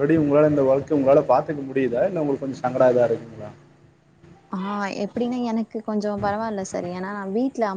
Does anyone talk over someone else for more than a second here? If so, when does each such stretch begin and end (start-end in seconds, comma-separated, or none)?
none